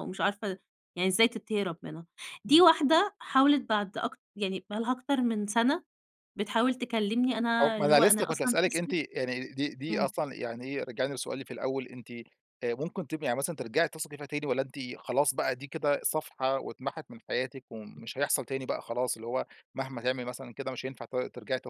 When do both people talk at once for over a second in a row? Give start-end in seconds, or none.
7.6-9.0